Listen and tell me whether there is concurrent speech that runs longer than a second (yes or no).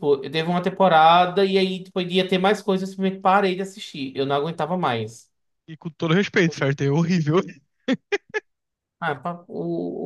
no